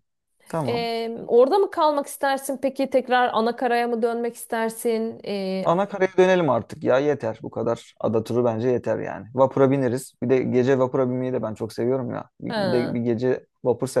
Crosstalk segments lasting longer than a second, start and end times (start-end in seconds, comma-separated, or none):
none